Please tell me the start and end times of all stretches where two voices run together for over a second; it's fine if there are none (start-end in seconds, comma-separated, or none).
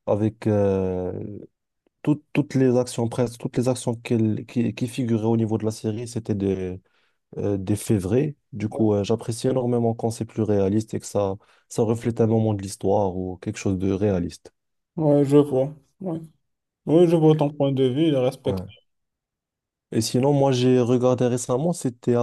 none